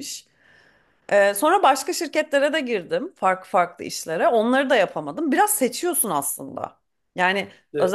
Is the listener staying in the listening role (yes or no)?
yes